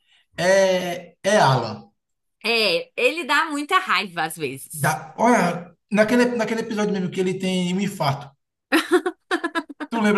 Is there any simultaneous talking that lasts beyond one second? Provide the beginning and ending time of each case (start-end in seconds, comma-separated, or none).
none